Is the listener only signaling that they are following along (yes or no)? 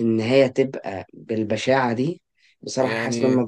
yes